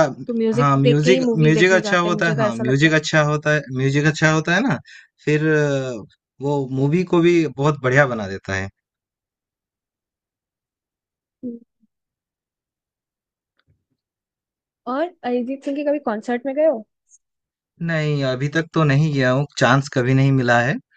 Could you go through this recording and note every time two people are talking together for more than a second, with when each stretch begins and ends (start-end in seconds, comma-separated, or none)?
0.5-2.9